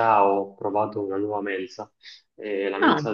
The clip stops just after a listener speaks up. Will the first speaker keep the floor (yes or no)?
yes